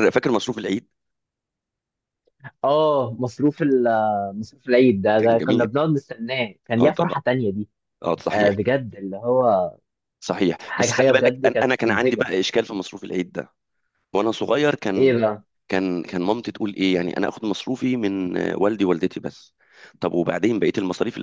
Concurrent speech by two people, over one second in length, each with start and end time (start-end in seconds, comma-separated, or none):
10.7-12.3